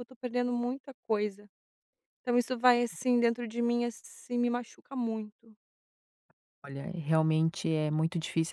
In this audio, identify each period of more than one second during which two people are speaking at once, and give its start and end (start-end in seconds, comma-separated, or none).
none